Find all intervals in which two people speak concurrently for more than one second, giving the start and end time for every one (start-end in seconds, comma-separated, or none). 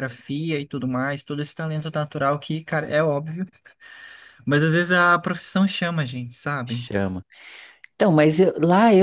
none